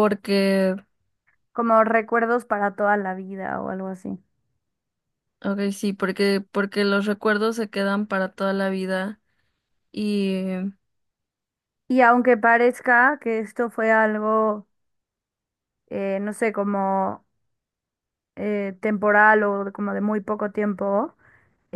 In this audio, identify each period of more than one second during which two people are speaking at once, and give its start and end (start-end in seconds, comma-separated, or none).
none